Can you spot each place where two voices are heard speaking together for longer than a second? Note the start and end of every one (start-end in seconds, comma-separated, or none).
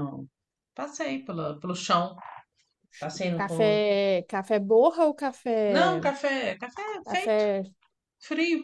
none